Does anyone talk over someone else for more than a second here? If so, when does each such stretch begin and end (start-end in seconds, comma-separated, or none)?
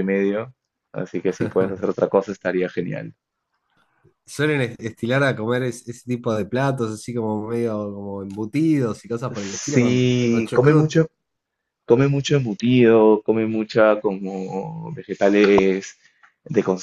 9.3-10.9